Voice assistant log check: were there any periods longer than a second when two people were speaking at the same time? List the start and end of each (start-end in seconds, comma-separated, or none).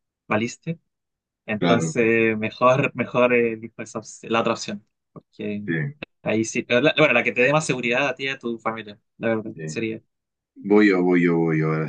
none